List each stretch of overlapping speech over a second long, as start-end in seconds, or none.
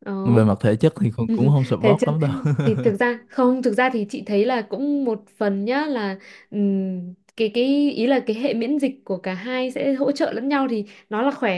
none